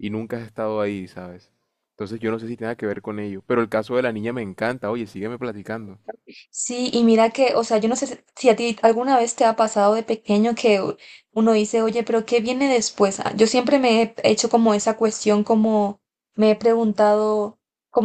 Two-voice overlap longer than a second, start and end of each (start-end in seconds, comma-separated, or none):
none